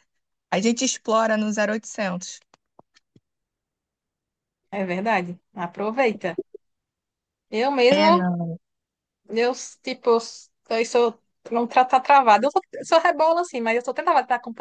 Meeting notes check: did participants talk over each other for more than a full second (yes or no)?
no